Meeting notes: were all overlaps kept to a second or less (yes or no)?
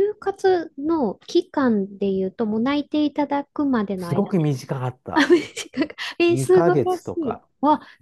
no